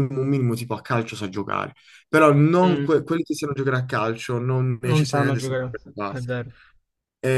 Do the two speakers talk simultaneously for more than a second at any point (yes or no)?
yes